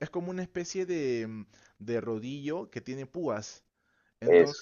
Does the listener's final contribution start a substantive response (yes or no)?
no